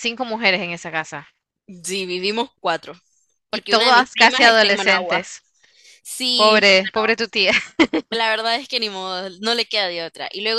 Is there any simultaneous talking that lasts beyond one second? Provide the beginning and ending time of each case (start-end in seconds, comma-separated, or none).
3.5-5.3